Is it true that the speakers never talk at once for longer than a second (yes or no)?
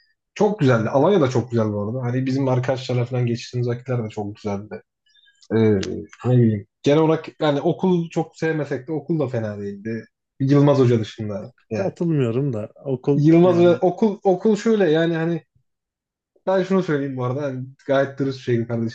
yes